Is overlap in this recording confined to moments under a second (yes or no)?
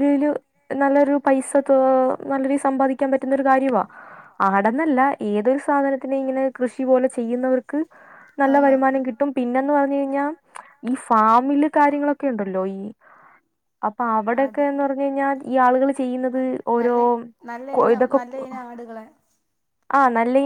yes